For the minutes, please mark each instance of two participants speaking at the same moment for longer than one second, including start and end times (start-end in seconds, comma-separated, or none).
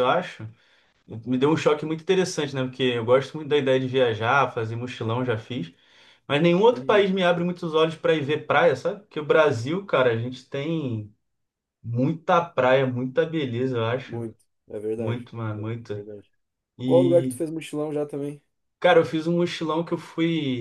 none